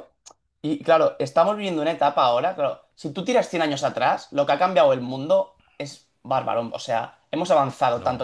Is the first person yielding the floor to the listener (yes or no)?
no